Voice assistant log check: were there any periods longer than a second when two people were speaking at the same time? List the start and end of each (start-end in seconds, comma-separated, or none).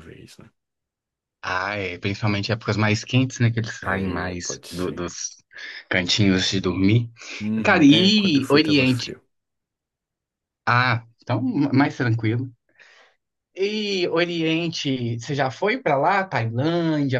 3.8-5.1, 7.6-9.1